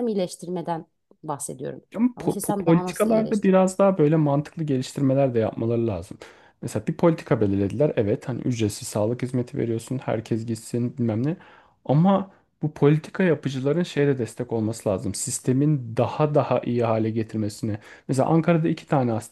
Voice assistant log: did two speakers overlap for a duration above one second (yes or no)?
yes